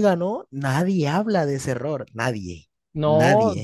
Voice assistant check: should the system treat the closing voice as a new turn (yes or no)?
yes